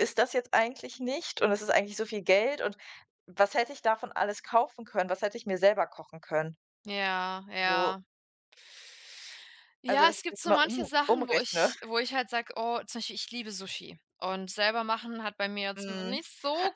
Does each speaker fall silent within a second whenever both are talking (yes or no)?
no